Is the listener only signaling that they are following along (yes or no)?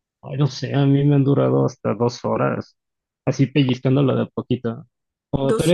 yes